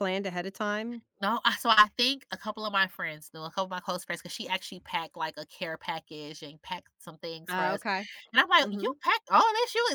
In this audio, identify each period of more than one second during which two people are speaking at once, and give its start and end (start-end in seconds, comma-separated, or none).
none